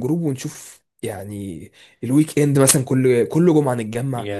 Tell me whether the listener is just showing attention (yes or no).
yes